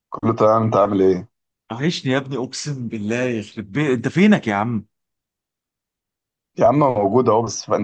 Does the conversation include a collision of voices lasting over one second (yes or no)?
no